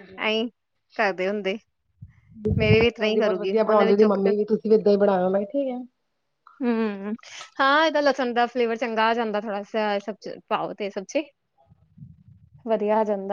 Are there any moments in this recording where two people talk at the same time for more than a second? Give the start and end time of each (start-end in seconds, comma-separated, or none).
2.6-4.3